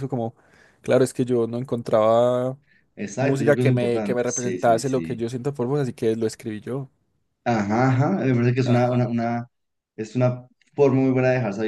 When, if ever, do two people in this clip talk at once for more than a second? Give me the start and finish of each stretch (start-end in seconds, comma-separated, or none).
3.2-5.2